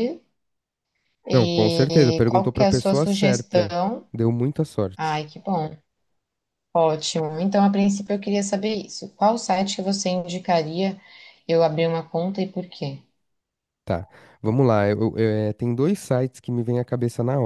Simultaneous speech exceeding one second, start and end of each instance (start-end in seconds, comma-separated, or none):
1.3-3.8